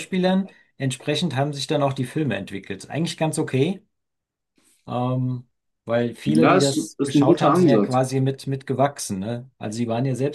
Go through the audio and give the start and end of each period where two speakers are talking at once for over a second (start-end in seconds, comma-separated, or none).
6.3-8.0